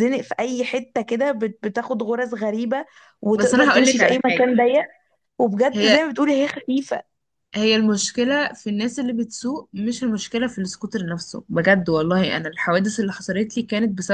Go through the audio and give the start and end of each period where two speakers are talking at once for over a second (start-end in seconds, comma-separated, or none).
3.3-4.5